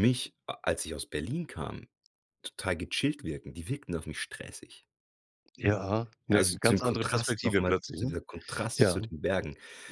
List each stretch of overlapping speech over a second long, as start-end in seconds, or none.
6.3-8.2